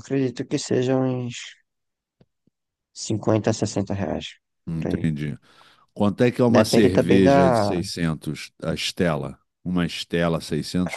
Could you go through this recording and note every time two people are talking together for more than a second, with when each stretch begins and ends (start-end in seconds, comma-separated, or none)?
6.5-7.8